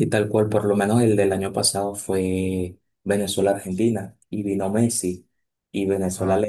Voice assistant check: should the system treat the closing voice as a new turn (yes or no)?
no